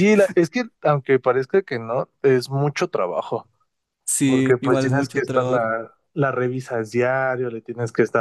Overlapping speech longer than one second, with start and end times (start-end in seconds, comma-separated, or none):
4.2-5.6